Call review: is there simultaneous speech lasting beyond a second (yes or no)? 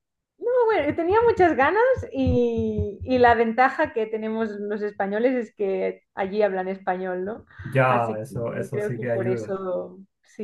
yes